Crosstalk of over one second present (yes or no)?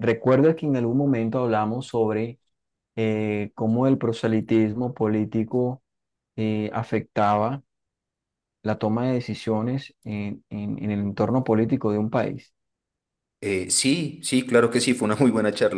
no